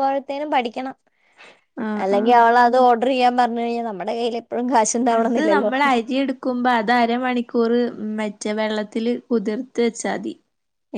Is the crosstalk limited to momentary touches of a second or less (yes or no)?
yes